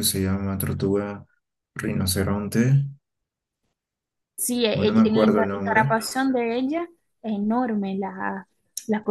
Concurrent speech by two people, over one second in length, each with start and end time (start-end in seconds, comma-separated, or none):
4.7-6.0